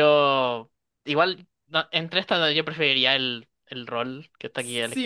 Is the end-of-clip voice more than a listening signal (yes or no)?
yes